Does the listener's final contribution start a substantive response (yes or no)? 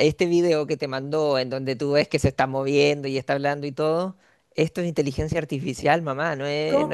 yes